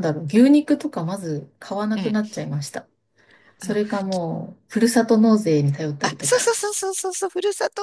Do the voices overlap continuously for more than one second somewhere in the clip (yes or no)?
no